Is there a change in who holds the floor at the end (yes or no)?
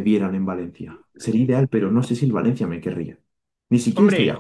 yes